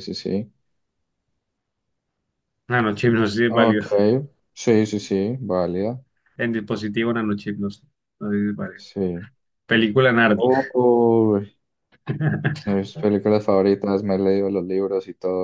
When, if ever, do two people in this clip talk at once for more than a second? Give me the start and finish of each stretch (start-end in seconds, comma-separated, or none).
none